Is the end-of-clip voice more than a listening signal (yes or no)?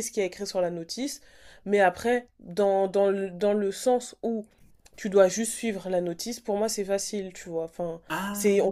no